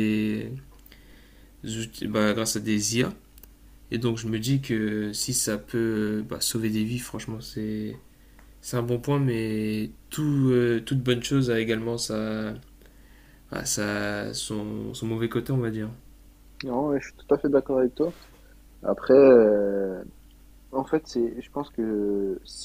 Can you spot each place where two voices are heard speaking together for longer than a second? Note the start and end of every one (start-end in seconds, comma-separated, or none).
none